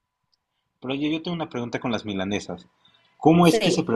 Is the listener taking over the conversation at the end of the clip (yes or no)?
no